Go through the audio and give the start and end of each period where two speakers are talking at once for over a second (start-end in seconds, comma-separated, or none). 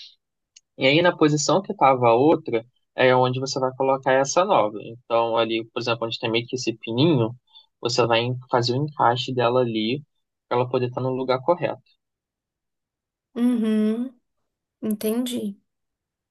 none